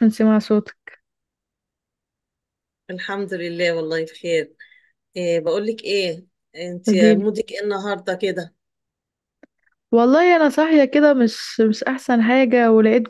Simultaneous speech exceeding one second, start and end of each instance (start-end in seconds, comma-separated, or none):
none